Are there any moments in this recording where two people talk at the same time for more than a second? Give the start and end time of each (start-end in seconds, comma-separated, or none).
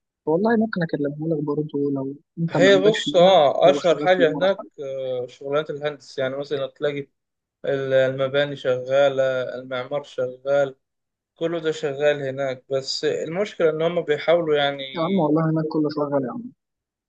2.5-4.5